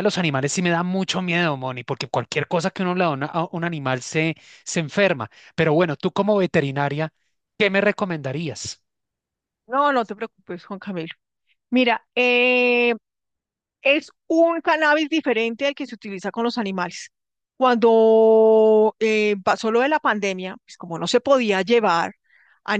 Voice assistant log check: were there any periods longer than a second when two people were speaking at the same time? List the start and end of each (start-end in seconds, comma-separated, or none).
none